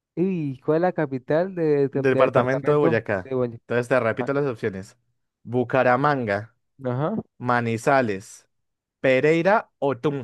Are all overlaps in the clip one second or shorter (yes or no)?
no